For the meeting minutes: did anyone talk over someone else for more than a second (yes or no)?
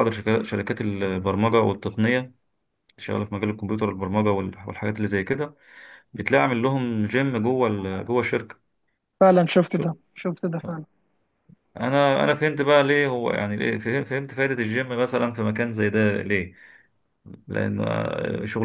no